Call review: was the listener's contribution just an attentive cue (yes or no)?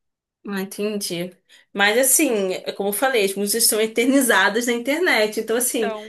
yes